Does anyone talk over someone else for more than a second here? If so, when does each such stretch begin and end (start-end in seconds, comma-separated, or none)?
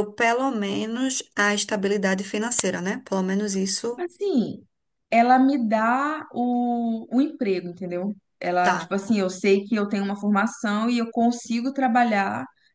none